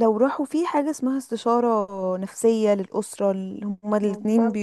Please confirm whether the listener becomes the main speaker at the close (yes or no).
no